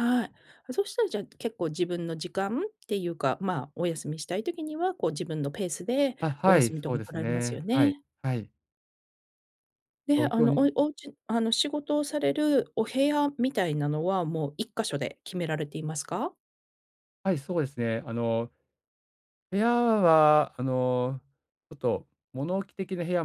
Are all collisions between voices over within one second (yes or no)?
no